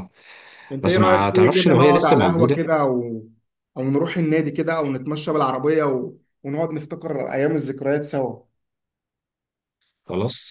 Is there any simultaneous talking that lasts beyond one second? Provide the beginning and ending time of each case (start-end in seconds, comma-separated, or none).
0.8-2.6